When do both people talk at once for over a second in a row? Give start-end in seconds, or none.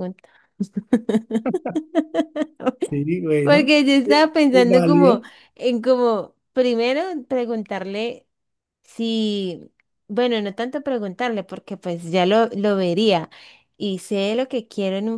3.4-5.2